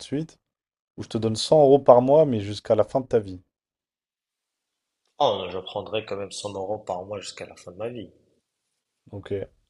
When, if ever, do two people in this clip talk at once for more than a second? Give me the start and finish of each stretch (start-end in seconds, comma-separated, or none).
none